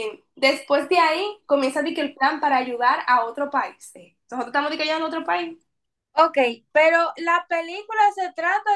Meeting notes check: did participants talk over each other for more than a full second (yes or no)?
no